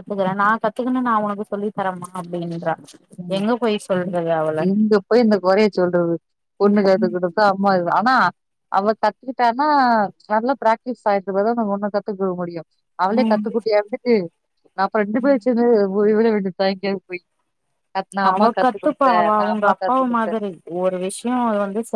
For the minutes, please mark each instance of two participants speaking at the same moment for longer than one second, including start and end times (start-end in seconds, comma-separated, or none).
18.3-20.3